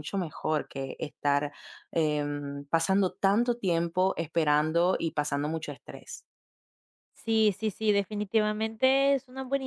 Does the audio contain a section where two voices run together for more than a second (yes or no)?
no